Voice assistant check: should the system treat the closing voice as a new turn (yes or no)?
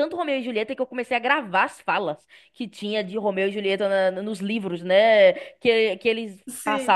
no